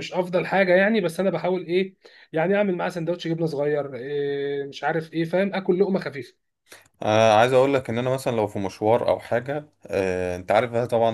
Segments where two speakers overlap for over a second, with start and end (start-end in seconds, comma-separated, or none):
none